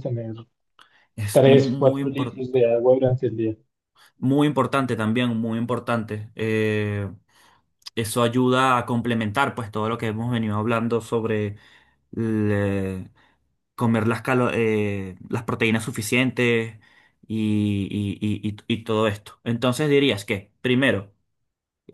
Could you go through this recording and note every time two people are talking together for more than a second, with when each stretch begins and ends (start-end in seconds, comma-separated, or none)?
1.3-2.6